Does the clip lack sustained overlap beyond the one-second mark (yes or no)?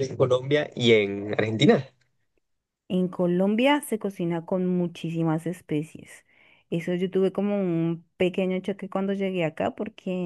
yes